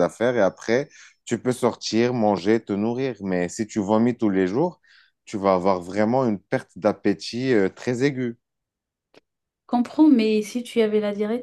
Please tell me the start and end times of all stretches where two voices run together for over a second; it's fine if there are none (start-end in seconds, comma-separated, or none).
none